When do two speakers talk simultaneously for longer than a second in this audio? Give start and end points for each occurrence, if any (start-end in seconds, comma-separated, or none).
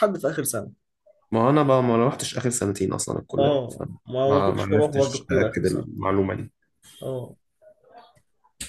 3.4-5.9